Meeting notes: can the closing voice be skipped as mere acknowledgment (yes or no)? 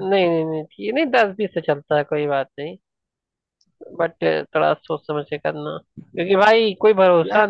yes